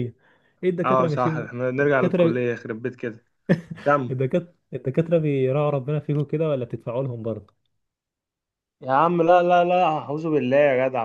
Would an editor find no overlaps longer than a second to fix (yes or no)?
no